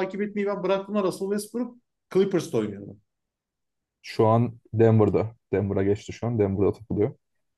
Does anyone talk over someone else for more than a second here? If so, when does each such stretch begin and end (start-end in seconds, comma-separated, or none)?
none